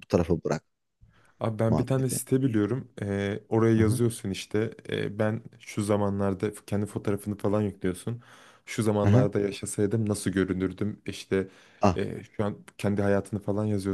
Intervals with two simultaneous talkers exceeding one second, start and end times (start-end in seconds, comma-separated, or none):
none